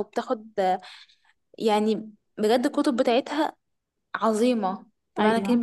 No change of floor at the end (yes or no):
no